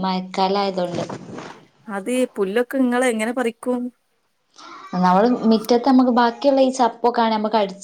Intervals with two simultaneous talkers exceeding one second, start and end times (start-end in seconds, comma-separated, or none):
none